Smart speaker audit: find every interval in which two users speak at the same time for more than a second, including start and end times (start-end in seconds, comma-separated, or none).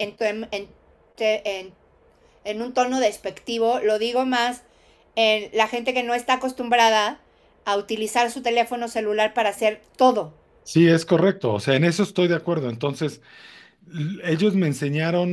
none